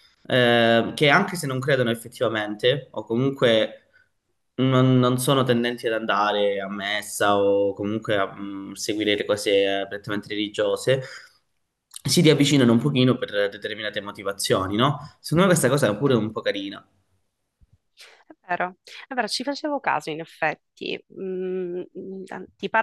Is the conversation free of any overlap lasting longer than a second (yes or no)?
yes